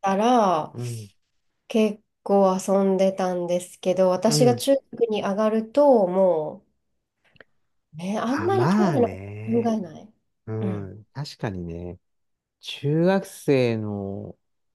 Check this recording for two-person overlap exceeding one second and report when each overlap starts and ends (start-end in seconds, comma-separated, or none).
8.2-9.8